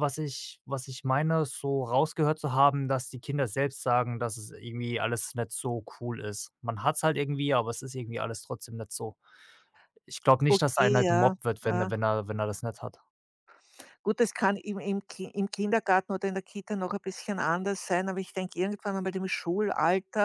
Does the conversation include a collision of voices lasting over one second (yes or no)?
yes